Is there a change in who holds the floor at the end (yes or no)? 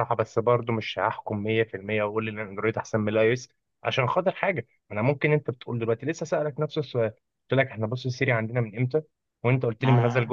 no